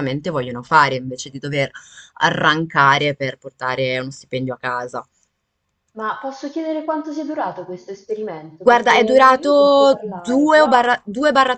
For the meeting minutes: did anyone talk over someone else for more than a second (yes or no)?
yes